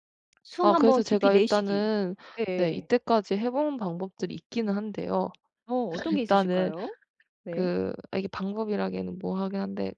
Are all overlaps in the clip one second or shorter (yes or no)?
no